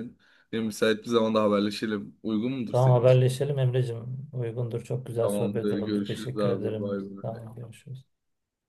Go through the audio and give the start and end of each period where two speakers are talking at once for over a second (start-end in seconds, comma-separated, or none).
5.2-7.4